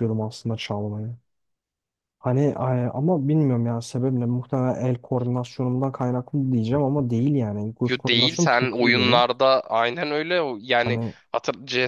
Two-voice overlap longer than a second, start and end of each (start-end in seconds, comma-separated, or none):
7.9-9.2